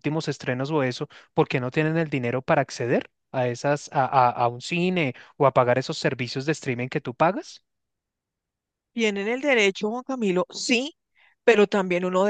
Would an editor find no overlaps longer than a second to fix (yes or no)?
yes